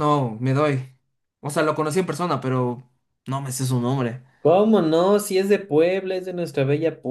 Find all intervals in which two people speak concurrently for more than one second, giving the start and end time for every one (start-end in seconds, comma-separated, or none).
none